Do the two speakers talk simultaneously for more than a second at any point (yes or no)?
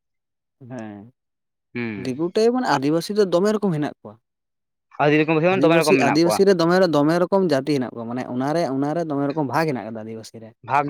yes